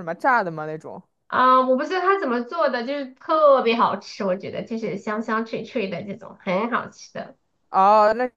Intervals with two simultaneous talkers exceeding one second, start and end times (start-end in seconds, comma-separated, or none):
none